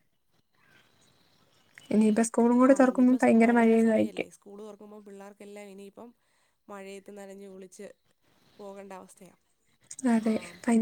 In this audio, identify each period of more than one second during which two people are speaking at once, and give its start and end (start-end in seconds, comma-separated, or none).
none